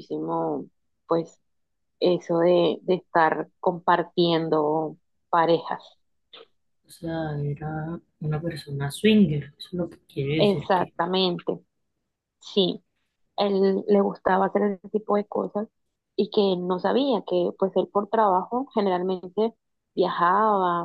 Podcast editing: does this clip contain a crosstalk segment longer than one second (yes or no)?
no